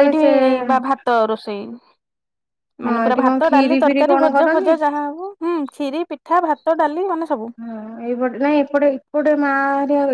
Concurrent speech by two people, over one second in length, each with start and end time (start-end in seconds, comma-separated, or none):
2.9-4.7